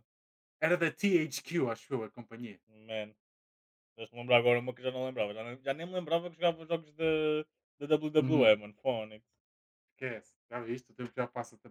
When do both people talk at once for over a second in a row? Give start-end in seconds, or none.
none